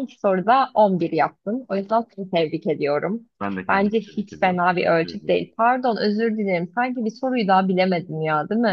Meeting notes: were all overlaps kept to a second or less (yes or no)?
no